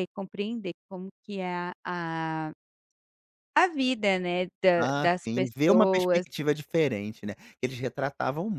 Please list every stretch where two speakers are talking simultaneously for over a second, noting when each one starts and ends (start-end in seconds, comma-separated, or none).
4.8-6.2